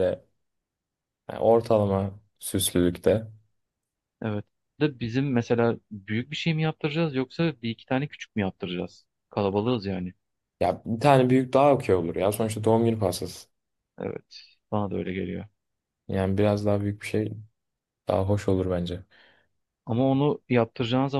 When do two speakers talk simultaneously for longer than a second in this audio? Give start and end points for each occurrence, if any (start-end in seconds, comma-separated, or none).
none